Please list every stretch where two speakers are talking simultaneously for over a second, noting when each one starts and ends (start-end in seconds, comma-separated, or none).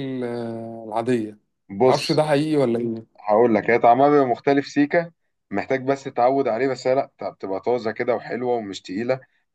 none